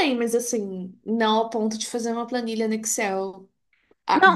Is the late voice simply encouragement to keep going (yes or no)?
yes